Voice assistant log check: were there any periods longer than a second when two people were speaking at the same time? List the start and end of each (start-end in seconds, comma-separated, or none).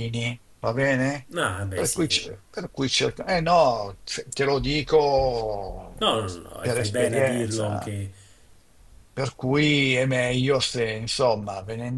6.6-7.9